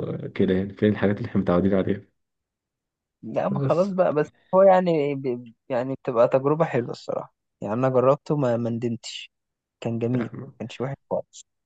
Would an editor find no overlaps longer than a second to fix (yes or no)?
yes